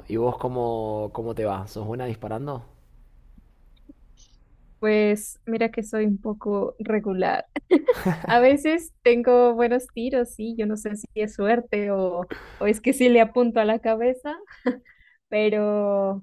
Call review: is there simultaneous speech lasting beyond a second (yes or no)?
no